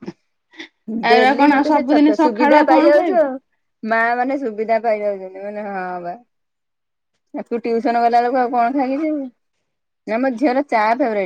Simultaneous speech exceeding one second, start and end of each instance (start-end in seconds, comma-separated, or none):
1.1-3.2